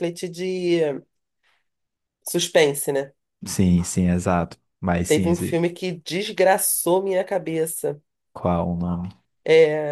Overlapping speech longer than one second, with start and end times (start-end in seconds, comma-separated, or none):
none